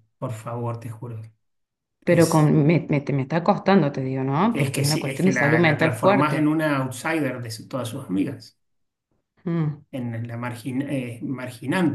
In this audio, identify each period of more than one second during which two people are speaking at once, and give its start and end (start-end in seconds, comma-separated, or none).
4.5-6.5